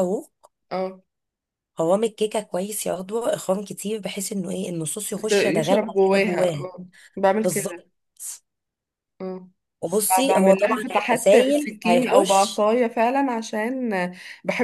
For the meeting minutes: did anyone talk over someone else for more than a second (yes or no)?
yes